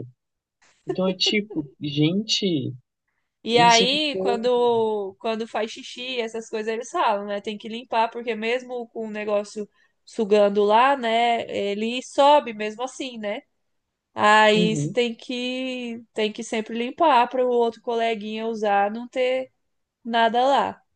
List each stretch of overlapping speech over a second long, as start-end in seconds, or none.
3.5-4.7